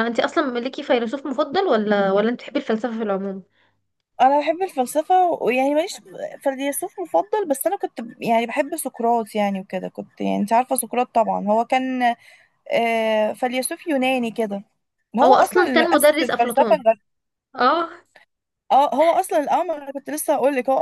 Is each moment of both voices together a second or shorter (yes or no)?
no